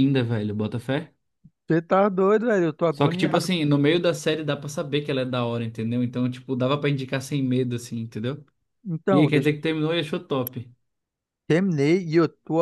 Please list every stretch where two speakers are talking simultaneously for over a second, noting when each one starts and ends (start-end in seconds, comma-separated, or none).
none